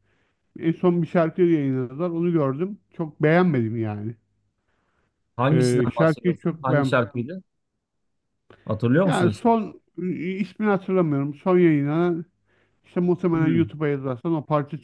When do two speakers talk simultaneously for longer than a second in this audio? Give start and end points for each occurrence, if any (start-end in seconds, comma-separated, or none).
5.5-7.0